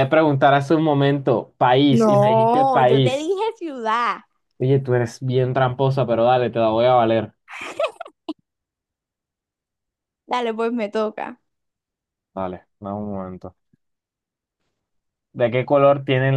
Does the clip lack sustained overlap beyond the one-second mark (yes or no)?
no